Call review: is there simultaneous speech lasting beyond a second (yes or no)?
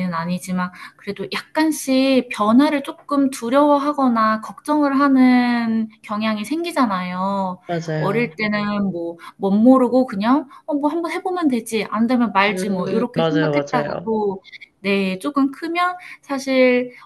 yes